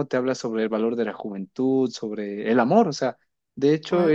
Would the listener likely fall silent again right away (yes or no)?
yes